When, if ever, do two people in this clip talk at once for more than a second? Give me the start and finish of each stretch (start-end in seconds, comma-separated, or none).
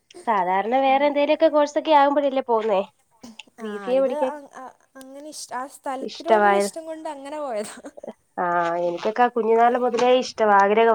none